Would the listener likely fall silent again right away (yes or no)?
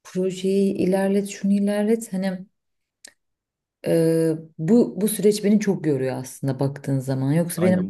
no